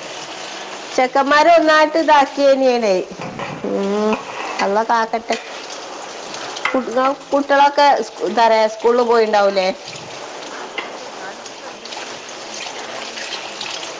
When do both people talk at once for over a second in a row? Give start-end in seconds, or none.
1.0-3.0